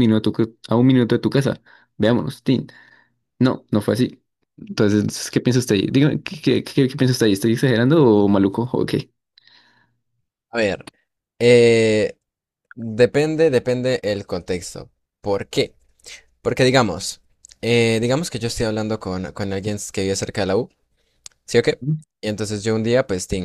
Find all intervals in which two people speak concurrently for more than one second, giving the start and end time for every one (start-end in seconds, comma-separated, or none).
none